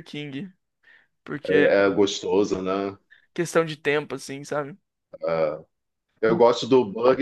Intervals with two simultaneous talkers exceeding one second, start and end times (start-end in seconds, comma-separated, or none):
none